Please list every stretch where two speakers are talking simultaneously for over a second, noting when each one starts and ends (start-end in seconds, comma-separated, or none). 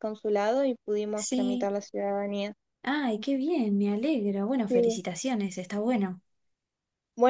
none